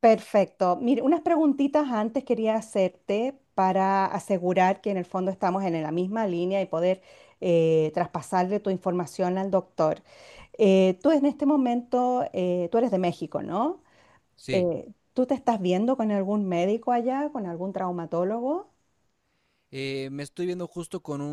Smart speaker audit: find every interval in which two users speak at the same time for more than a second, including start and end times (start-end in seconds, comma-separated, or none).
none